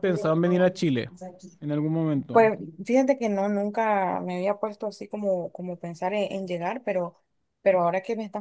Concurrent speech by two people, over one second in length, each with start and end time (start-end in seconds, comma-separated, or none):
none